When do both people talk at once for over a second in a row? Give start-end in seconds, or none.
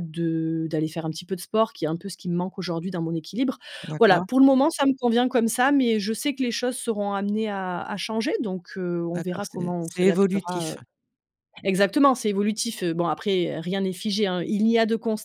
9.2-10.7